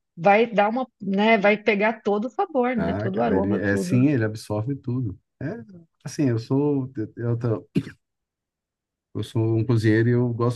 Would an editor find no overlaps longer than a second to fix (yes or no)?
no